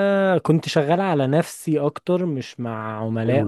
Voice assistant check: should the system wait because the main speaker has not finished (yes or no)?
no